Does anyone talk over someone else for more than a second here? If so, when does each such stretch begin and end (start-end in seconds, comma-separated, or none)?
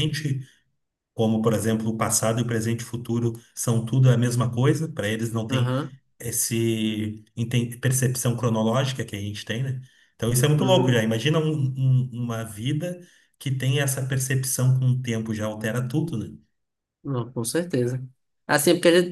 none